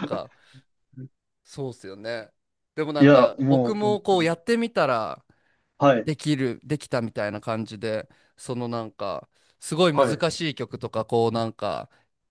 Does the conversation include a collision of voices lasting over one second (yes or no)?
yes